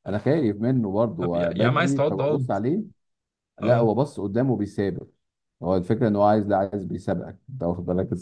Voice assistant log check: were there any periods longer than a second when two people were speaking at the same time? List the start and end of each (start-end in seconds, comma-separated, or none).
1.2-2.5